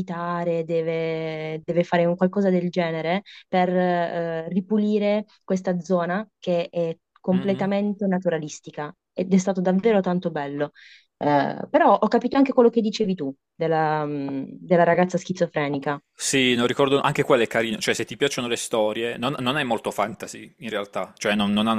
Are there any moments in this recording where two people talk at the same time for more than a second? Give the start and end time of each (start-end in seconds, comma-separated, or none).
none